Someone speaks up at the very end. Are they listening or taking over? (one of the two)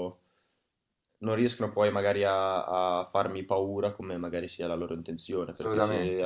listening